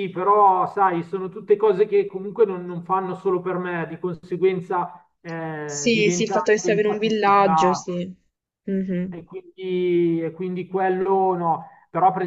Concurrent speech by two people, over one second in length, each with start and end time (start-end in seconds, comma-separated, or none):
5.7-7.9